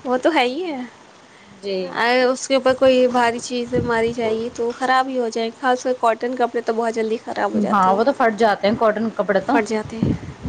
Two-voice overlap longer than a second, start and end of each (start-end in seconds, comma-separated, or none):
none